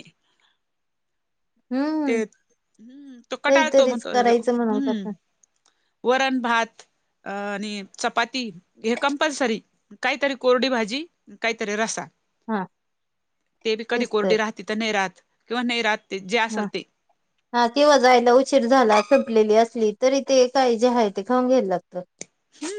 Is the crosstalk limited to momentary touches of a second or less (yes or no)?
no